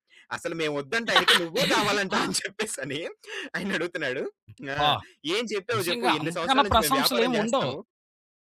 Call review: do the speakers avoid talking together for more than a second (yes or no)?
no